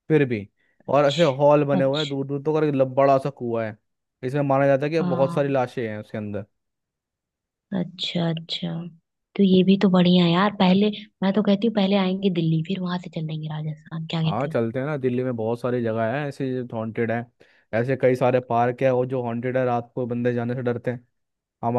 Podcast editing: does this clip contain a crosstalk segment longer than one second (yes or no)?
yes